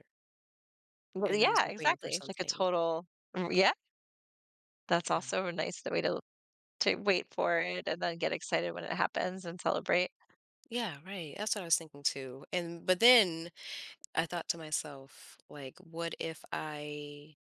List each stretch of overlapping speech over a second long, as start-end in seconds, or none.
1.3-2.7